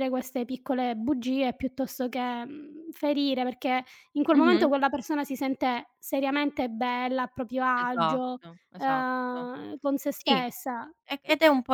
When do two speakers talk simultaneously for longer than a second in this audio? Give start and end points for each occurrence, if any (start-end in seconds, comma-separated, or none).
7.7-9.5